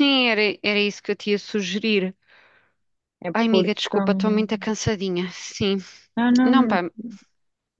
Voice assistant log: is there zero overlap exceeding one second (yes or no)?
no